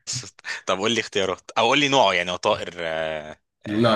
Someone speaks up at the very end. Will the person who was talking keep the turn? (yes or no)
no